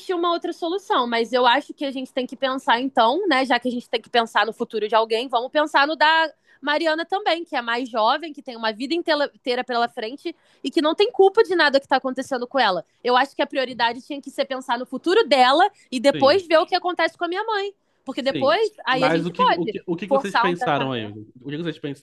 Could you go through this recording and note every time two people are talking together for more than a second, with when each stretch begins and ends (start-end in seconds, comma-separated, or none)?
18.2-21.1